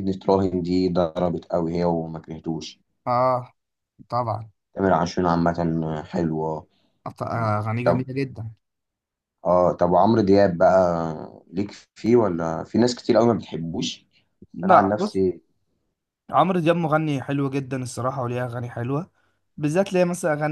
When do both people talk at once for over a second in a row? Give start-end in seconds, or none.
none